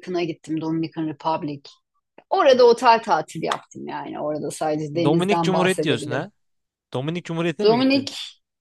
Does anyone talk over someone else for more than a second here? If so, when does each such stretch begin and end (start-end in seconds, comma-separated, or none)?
5.0-6.3